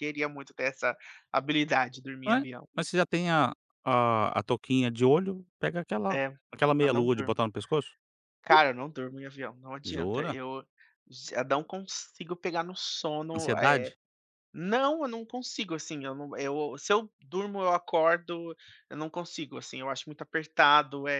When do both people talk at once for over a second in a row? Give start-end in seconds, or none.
none